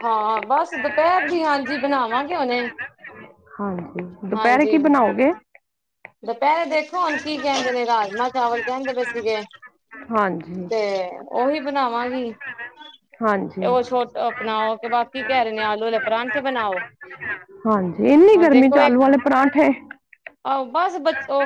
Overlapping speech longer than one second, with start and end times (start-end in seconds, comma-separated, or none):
none